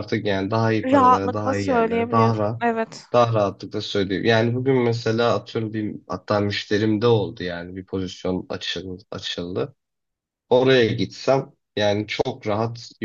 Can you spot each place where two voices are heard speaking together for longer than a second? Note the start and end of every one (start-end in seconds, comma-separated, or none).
0.8-2.6